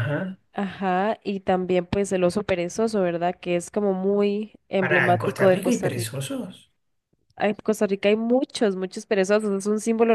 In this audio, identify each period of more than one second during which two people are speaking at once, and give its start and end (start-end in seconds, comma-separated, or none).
4.8-6.2